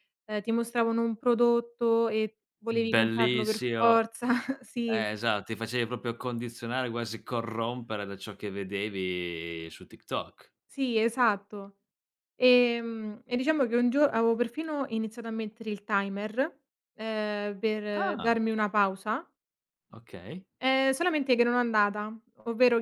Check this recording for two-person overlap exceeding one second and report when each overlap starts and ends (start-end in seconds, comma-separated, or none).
2.7-4.0